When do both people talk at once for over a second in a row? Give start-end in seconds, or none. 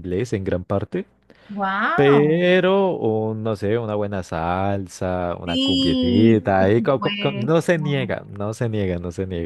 5.4-7.5